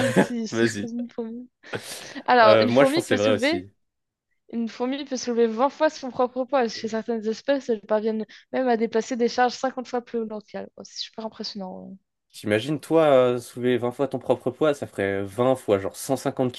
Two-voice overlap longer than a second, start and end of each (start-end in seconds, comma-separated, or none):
2.4-3.6